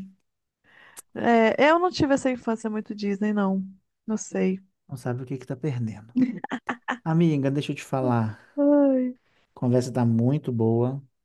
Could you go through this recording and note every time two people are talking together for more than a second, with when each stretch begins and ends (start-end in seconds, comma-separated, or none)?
none